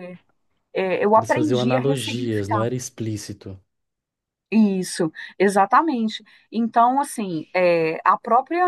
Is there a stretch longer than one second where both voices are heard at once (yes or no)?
yes